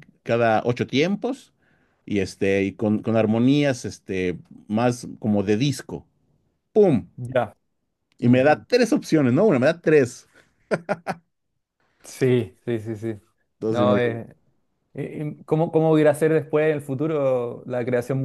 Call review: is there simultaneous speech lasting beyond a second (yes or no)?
no